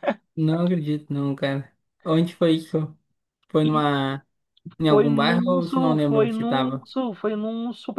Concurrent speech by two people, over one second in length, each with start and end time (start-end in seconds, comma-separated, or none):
4.9-6.9